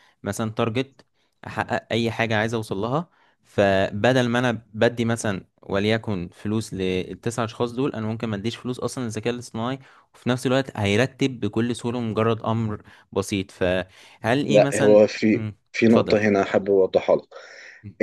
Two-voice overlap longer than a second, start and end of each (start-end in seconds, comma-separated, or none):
14.5-16.4